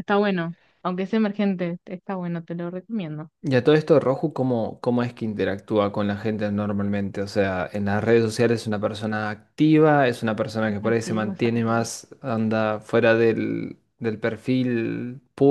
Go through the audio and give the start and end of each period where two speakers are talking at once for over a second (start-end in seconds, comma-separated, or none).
10.6-11.9